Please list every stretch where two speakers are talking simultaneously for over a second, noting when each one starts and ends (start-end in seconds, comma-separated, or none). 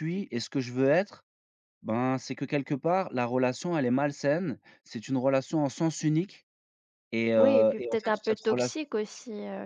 7.4-8.8